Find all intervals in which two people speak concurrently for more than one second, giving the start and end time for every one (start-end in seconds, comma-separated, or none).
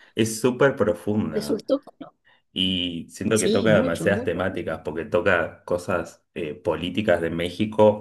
3.3-4.7